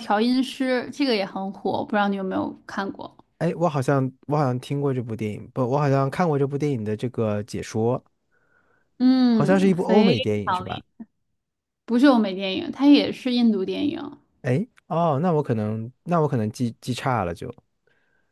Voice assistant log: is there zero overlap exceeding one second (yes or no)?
no